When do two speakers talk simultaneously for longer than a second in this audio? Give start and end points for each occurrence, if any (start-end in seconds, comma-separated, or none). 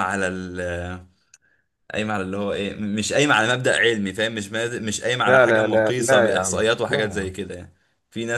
5.3-7.3